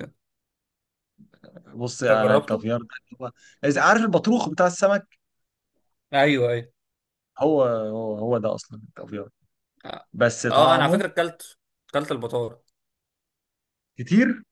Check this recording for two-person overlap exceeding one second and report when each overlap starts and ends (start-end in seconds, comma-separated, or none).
none